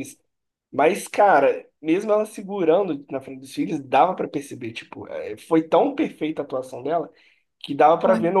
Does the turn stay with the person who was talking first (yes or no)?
yes